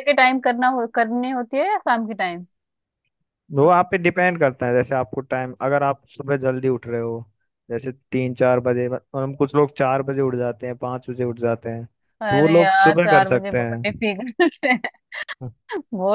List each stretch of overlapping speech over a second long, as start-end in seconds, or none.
12.3-13.8